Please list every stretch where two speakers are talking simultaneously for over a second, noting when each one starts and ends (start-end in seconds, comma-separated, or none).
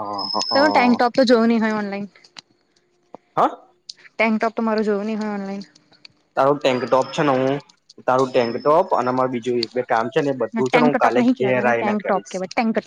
10.6-12.4